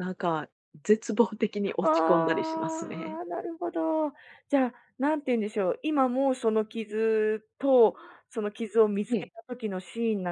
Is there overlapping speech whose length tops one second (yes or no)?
yes